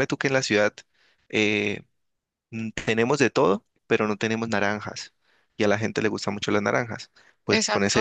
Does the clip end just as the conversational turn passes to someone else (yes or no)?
no